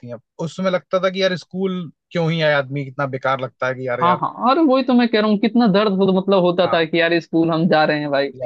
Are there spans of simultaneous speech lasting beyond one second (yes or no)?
no